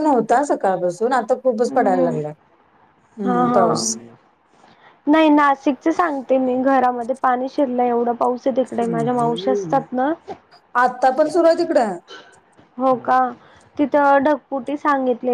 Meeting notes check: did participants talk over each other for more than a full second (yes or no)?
no